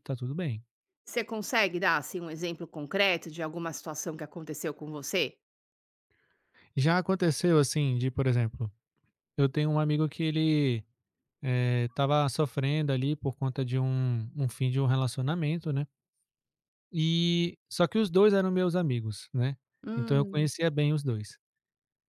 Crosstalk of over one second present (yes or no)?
no